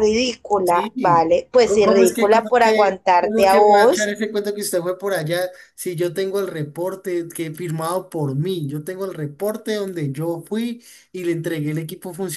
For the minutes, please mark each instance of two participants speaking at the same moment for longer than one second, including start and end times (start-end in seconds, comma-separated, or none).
0.6-4.1